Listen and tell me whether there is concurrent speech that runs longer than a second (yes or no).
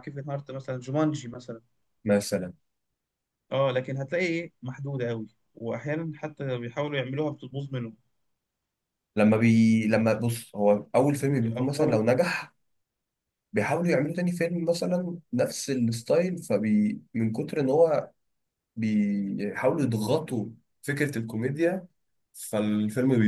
no